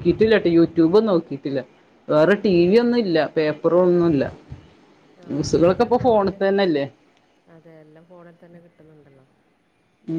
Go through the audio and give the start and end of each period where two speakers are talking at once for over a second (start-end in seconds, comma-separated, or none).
none